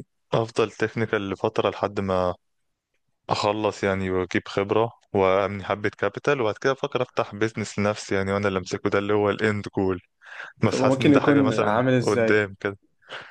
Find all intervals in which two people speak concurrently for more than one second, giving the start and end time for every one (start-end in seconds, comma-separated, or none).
10.7-12.4